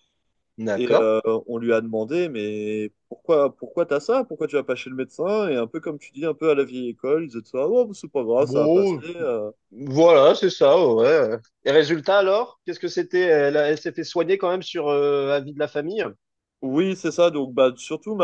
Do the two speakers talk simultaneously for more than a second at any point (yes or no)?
no